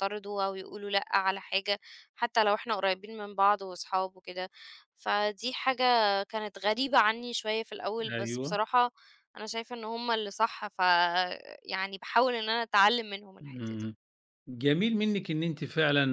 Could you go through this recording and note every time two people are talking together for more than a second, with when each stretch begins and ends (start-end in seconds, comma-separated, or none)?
none